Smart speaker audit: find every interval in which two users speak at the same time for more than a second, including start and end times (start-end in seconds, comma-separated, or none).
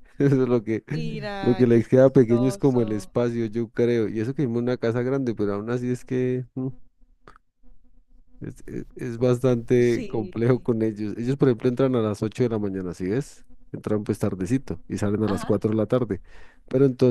1.4-3.1